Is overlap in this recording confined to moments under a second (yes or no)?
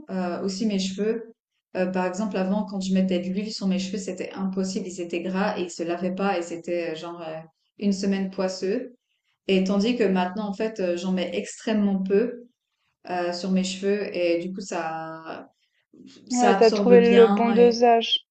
no